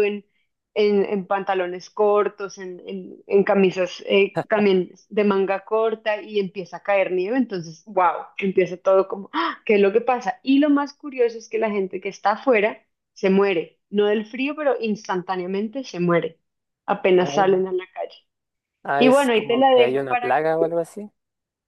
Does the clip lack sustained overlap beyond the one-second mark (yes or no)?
no